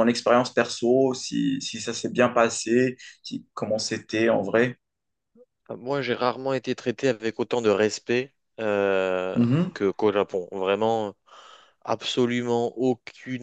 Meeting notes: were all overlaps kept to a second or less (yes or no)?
yes